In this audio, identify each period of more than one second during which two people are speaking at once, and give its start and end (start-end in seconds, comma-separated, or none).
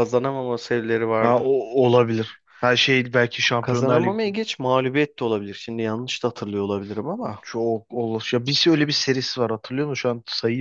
none